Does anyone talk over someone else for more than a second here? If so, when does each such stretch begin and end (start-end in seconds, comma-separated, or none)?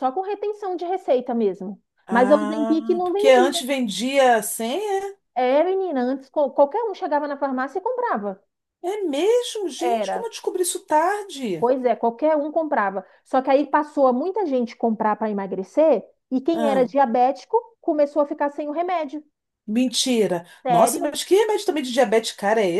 2.1-3.6